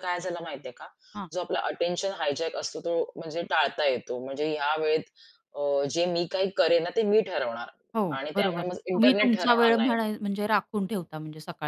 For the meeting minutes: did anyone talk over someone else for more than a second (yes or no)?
yes